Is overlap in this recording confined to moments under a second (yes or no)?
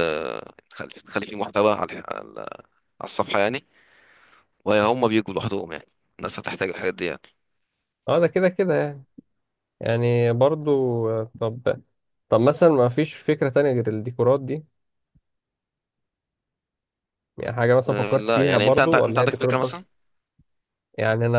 no